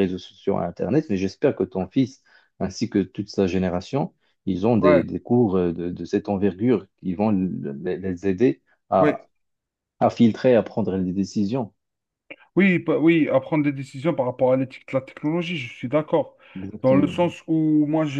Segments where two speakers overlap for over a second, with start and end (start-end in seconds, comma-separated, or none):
none